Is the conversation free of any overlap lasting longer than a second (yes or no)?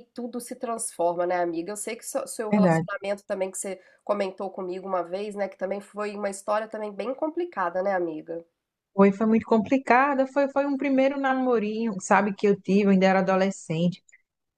yes